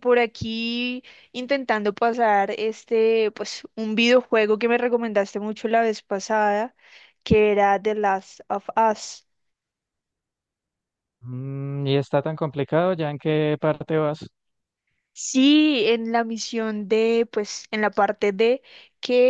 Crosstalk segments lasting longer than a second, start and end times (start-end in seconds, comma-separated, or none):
none